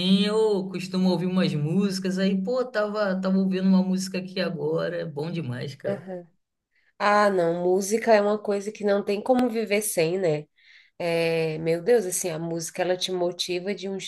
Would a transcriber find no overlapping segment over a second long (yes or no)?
yes